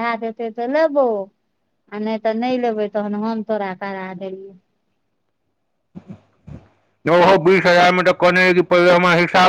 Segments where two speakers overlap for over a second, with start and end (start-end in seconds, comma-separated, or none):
none